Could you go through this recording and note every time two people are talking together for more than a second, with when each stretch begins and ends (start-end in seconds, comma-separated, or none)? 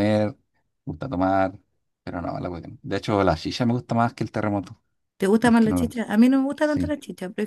none